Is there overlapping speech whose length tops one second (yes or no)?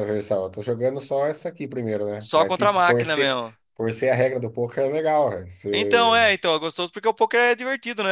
yes